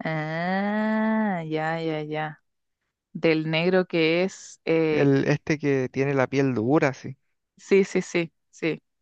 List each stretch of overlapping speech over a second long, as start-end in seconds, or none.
none